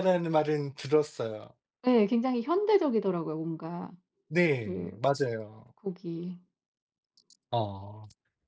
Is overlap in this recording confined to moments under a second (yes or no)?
yes